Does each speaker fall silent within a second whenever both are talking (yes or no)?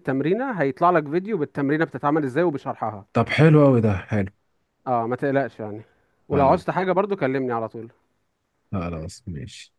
yes